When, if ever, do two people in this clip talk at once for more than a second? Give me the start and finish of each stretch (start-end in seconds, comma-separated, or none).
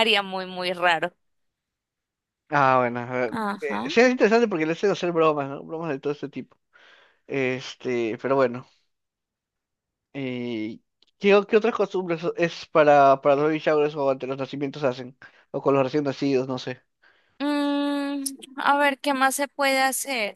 none